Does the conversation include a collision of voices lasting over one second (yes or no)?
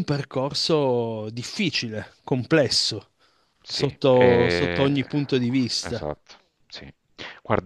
yes